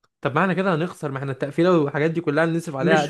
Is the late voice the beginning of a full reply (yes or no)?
yes